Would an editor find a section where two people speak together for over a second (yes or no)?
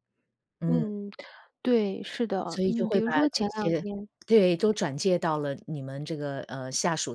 yes